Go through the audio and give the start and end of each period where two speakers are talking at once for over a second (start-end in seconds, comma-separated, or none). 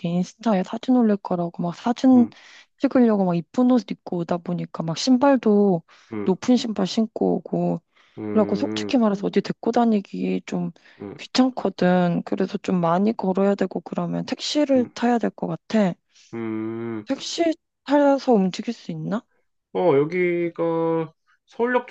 none